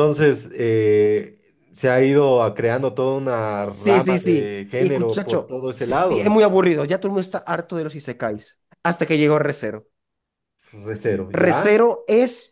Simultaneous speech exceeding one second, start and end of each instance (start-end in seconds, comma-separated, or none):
3.7-6.2